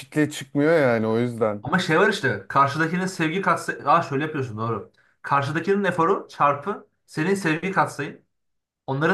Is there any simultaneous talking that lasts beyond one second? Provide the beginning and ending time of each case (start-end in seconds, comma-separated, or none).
none